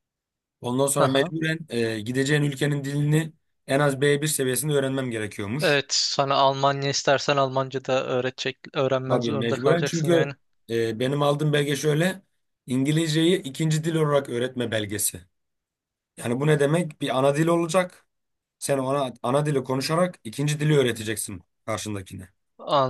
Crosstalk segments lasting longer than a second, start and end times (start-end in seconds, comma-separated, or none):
9.1-10.3